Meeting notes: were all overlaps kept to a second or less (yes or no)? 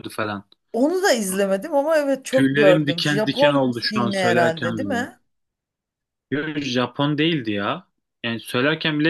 no